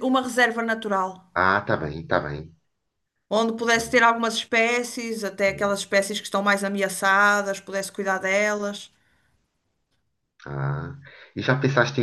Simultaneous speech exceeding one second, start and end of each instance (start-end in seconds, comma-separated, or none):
none